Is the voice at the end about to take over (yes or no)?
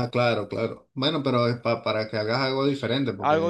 yes